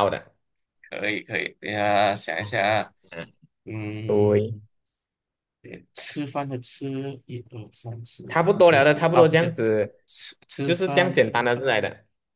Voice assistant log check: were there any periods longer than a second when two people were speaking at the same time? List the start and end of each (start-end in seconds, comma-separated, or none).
8.3-9.5